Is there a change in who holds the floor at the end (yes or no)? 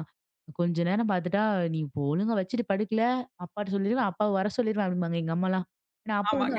no